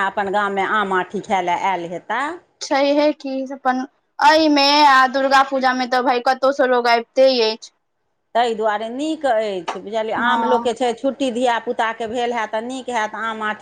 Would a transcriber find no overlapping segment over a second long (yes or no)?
yes